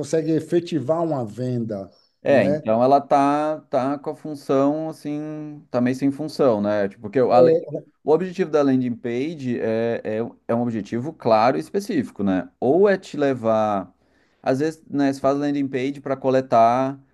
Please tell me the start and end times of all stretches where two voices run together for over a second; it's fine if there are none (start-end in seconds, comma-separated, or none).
none